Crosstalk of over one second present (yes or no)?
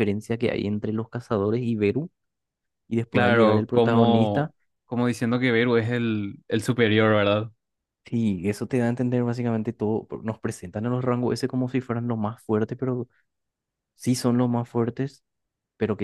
yes